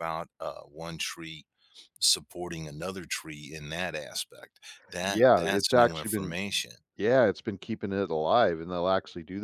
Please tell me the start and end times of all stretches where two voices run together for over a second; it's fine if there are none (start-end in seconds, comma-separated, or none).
5.1-6.3